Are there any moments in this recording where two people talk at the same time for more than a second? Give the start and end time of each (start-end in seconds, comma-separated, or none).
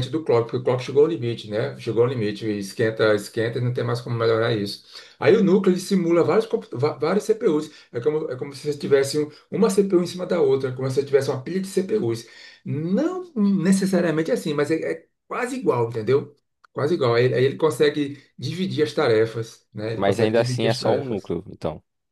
20.0-21.4